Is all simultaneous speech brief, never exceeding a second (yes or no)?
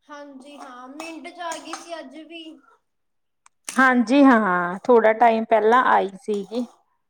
yes